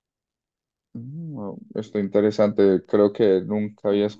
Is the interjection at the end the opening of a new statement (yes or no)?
no